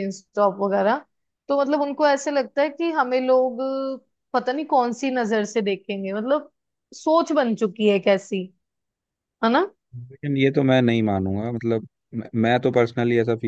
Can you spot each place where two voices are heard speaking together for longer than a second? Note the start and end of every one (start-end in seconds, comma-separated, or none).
none